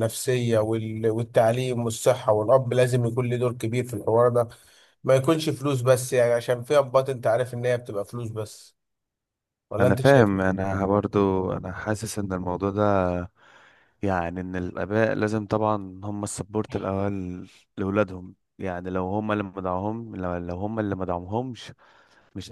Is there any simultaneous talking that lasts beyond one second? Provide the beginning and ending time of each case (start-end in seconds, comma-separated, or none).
none